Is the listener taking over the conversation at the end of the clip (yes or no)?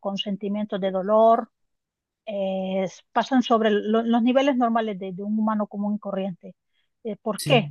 no